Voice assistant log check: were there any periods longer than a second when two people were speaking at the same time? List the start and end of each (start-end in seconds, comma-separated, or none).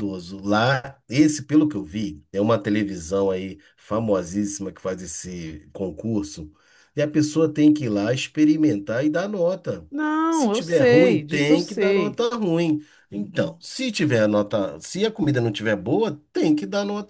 10.3-12.2